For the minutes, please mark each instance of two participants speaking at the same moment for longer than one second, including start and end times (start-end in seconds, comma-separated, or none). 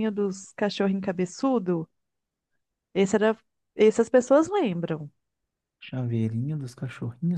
none